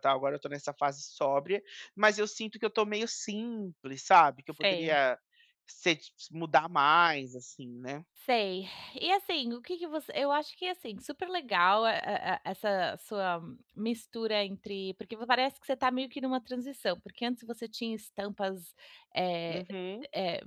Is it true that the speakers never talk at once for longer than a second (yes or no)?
yes